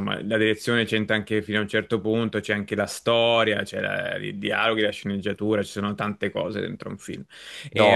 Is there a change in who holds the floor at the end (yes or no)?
no